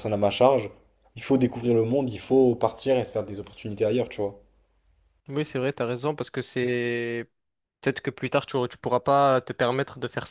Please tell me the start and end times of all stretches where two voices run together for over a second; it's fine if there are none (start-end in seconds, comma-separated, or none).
none